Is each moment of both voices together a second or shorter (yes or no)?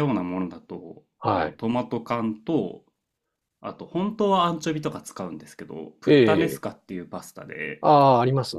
yes